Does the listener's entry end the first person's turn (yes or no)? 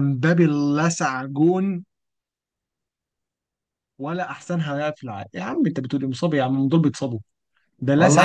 yes